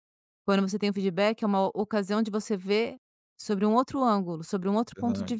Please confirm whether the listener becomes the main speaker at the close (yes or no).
yes